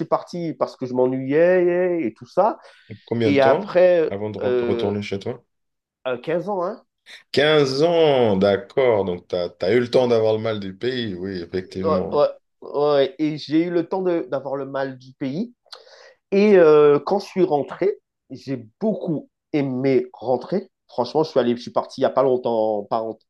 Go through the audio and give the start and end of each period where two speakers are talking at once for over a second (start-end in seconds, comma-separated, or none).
3.2-5.0